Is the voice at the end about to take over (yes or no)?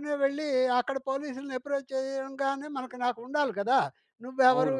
yes